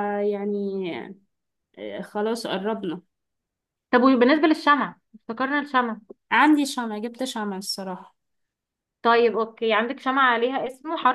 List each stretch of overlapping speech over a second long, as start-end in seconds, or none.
none